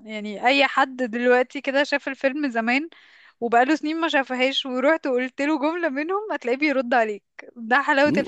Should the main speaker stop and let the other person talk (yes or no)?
yes